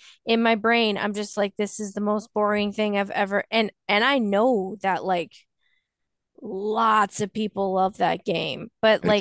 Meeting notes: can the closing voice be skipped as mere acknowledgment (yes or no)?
yes